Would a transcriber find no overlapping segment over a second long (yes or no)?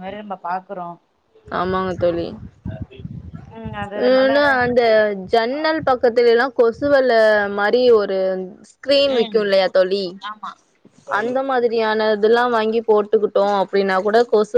yes